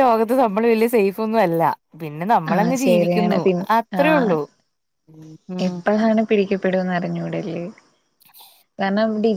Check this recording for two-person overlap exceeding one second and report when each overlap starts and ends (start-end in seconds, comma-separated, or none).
none